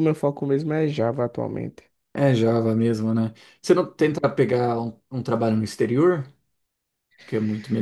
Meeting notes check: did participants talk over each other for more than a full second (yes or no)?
no